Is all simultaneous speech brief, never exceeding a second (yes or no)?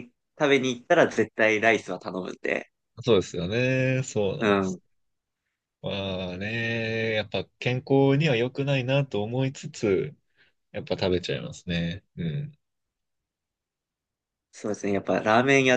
yes